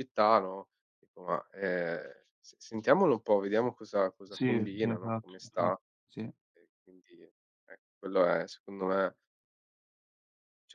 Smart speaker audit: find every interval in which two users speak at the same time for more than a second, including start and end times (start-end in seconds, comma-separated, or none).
4.3-5.8